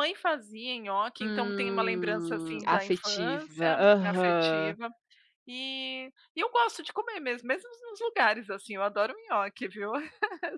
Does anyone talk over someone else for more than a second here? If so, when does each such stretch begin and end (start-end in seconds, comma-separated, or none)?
1.2-4.8